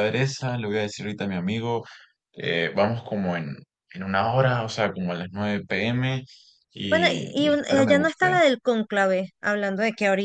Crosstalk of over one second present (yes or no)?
yes